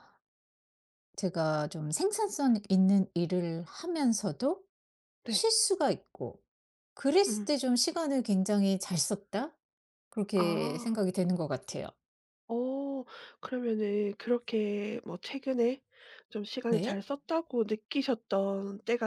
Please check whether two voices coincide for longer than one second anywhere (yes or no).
no